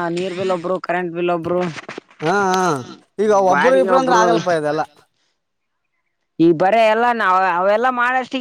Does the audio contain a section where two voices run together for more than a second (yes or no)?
yes